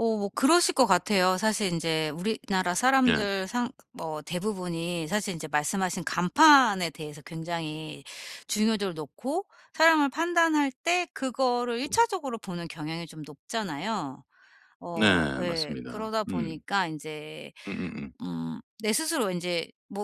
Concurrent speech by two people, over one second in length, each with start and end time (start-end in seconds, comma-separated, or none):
14.9-16.6